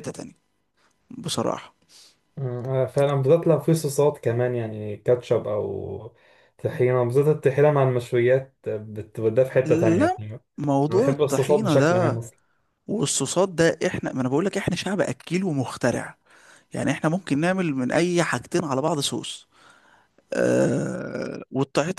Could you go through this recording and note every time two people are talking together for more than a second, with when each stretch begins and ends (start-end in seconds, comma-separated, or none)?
10.9-12.2